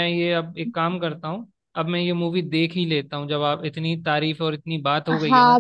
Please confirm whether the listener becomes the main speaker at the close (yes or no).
yes